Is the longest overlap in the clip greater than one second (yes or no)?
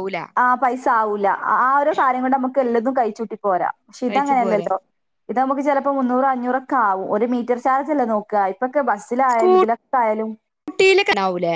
no